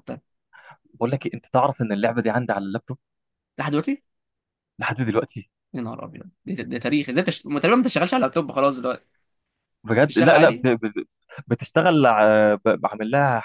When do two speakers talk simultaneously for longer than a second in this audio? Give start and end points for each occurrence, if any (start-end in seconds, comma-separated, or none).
none